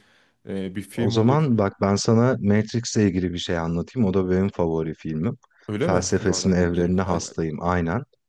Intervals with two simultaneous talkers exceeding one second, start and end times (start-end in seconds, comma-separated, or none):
5.8-7.3